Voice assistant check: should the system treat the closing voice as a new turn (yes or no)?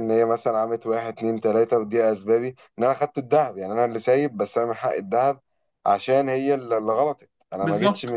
no